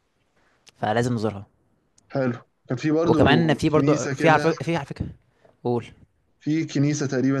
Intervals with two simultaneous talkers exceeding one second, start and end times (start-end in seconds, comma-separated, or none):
3.0-4.5